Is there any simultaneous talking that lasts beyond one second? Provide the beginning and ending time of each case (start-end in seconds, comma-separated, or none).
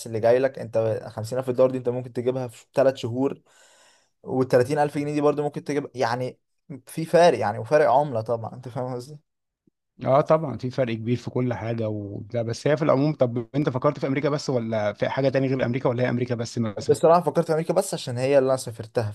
none